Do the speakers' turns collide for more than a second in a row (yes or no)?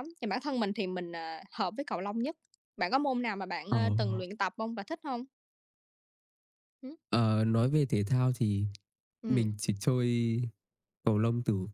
no